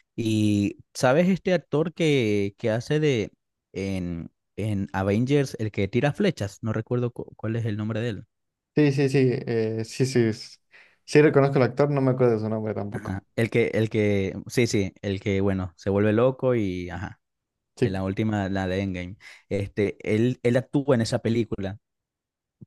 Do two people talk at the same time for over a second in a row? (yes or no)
no